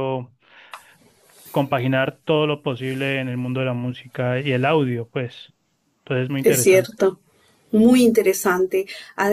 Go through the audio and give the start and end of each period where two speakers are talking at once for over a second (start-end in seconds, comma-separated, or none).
none